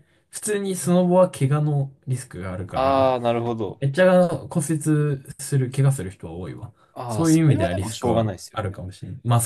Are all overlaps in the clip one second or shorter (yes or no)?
no